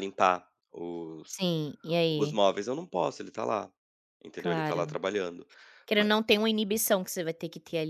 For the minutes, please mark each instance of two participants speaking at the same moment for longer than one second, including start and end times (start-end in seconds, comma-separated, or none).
none